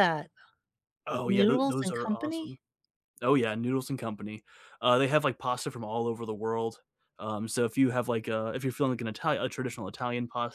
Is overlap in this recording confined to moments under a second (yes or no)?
no